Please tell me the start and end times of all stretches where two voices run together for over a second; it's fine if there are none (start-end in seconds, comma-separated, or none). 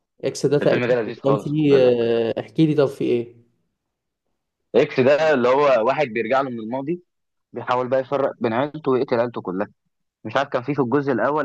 0.6-2.0